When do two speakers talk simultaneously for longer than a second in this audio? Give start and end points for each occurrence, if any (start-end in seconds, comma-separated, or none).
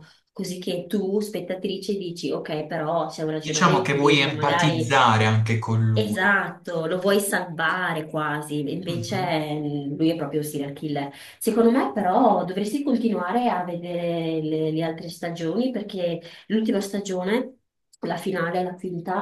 3.4-5.0